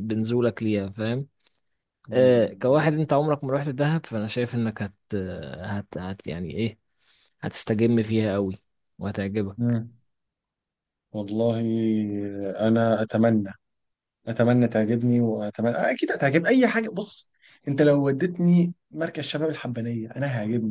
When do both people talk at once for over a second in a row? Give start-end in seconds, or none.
none